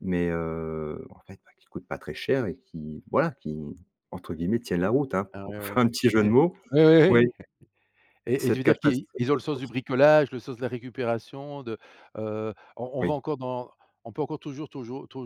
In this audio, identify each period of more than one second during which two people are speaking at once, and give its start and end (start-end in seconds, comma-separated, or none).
8.4-9.7